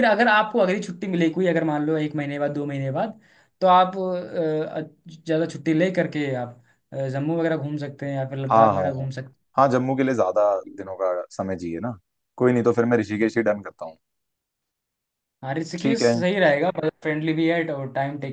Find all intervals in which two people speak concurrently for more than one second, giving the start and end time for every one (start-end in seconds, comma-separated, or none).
none